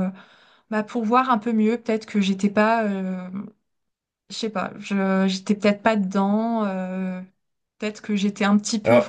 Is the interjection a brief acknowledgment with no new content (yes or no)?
yes